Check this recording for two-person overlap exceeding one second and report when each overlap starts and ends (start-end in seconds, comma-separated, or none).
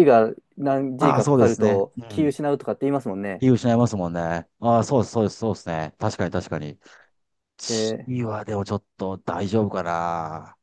1.0-2.3